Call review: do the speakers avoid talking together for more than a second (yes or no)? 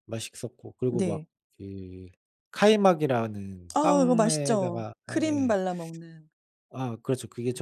no